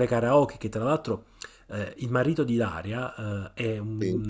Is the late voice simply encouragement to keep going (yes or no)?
yes